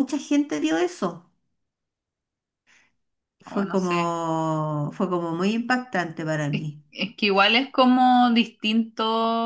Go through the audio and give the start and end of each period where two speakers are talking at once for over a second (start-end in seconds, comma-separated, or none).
none